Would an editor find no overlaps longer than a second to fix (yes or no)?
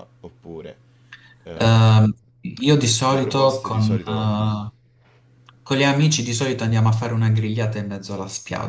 no